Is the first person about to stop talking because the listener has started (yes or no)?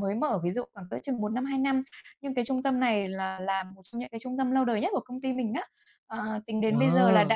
no